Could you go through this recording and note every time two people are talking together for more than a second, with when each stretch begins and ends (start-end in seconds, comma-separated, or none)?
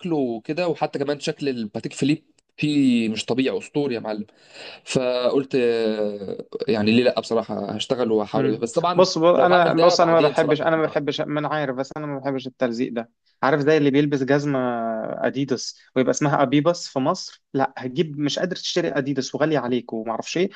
8.3-10.8